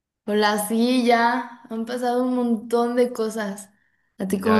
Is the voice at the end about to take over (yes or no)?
yes